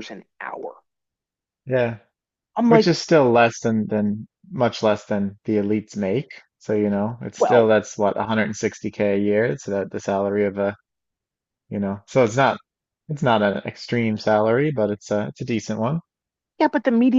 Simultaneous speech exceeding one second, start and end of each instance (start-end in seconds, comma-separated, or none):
none